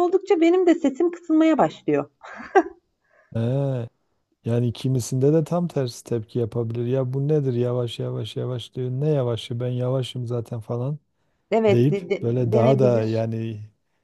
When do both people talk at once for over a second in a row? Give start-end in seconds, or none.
11.7-13.1